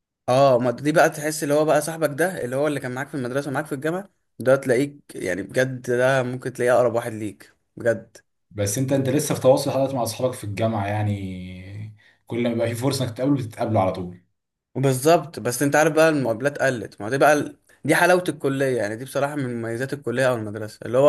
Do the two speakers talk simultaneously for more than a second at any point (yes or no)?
no